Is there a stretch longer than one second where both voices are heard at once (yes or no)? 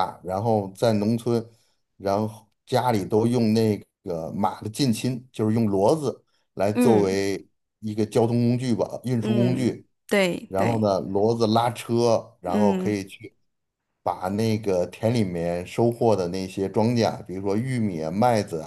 no